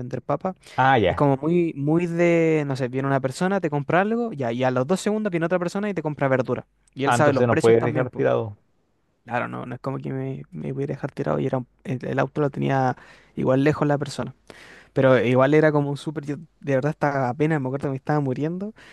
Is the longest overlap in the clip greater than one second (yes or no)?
yes